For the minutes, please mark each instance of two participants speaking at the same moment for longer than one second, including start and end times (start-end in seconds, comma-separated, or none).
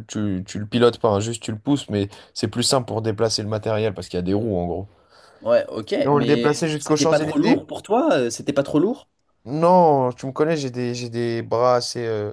6.0-7.7